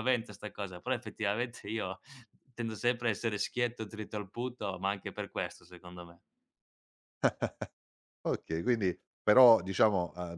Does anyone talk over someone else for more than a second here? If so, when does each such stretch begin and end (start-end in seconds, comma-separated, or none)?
none